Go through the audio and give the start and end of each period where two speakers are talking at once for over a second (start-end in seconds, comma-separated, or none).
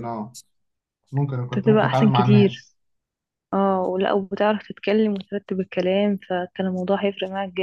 1.4-2.7